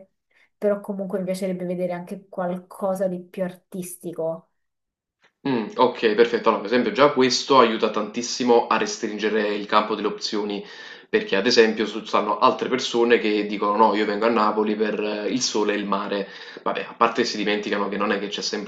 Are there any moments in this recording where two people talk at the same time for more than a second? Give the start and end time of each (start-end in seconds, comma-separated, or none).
none